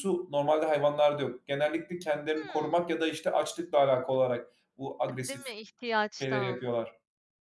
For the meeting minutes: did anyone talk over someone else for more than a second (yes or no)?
no